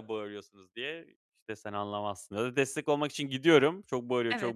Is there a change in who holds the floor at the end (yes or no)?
no